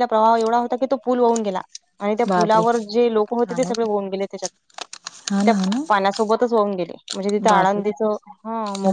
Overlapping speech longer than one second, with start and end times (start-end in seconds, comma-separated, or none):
none